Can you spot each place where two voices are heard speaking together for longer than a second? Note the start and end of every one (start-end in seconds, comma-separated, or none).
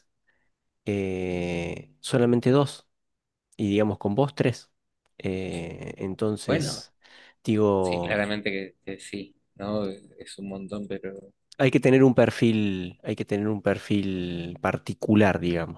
none